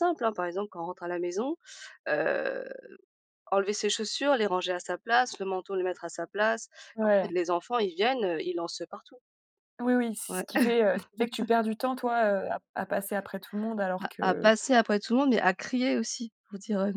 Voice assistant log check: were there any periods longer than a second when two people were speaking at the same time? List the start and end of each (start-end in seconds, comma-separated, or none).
none